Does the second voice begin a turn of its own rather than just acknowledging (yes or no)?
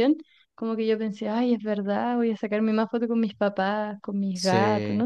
yes